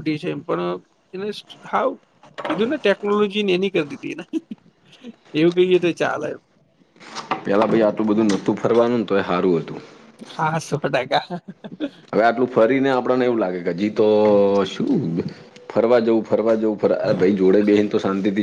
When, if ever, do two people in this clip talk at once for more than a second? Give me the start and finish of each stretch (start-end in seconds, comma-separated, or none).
none